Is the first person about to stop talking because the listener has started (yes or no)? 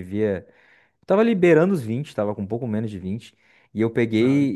no